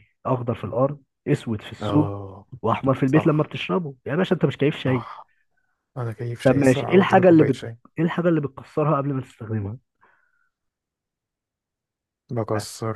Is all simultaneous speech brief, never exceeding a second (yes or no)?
no